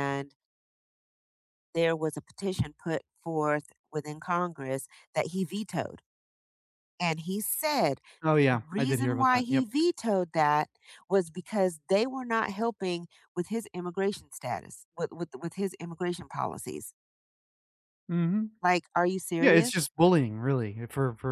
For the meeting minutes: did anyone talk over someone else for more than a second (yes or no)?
yes